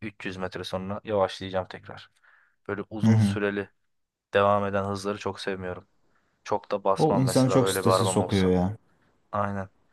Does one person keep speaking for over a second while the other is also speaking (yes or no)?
yes